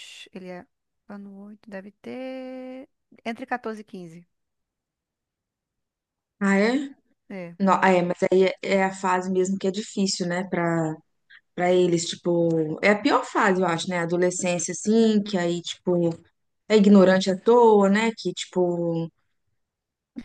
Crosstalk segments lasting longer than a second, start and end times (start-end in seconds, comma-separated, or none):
none